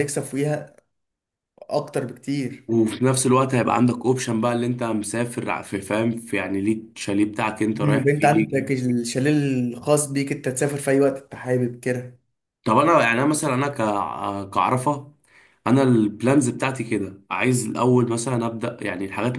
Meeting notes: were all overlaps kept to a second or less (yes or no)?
yes